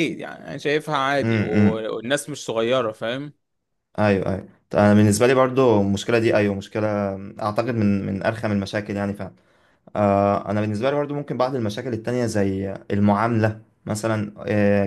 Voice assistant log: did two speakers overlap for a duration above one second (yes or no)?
no